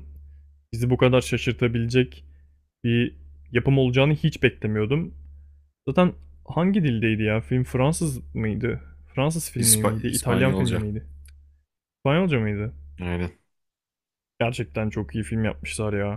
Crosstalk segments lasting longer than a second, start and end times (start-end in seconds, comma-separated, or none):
9.6-10.8